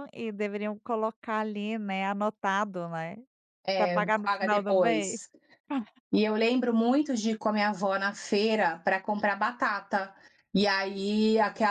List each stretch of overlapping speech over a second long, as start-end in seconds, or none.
3.8-5.2